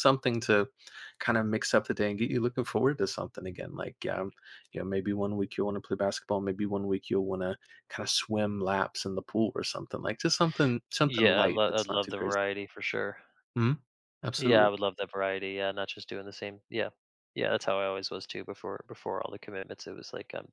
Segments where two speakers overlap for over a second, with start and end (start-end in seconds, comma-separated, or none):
11.0-12.4